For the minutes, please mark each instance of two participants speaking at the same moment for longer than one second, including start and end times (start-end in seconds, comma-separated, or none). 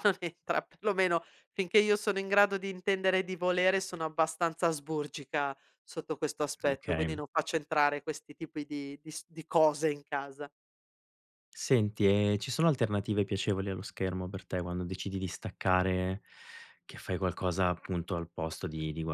none